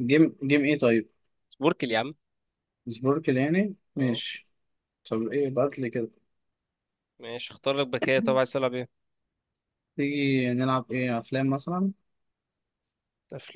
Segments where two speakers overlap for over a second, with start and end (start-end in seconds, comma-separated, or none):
none